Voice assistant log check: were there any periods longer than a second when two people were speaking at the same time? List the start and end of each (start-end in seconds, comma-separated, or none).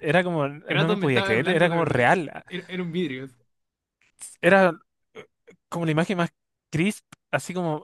0.7-2.4